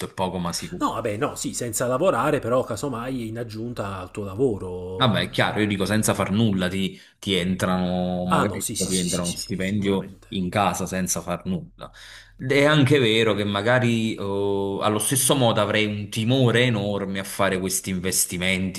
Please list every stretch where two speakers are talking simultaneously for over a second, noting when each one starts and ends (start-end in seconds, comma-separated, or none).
8.3-10.4